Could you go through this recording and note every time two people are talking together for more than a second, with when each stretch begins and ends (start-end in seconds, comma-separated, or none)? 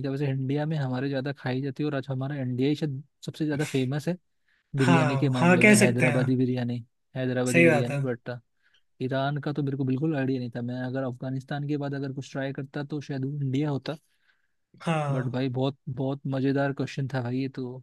4.8-6.2